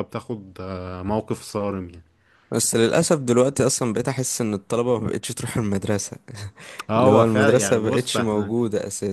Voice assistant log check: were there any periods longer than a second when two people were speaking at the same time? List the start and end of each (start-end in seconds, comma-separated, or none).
7.0-8.5